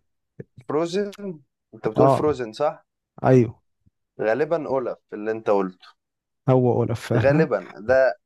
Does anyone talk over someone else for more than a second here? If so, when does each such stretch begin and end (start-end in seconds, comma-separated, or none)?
none